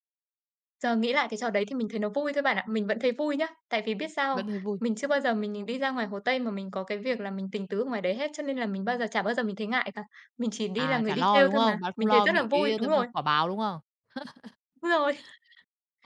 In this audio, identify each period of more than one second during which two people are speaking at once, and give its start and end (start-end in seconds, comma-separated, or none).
10.8-13.1